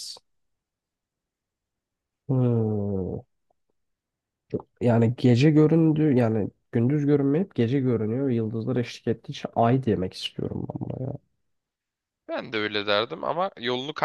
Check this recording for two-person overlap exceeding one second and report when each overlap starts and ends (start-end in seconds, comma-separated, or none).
none